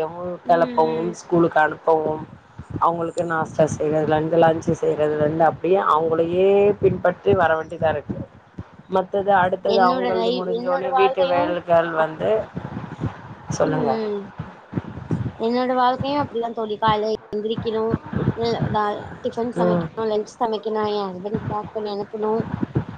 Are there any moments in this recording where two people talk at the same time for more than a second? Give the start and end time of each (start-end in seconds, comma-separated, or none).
9.8-12.0